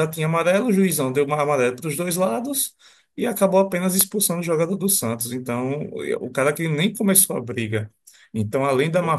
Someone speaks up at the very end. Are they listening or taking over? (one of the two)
listening